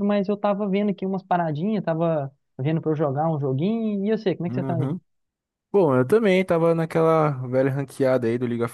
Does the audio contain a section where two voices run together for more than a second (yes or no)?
no